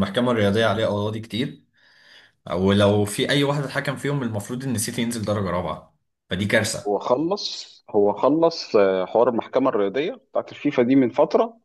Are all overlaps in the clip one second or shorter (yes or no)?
yes